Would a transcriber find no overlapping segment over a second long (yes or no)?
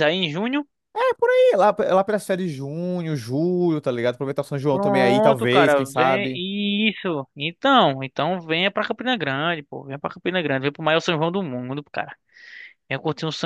no